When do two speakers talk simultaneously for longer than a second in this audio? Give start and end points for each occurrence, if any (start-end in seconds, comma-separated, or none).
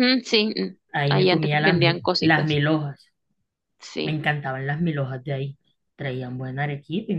0.9-2.6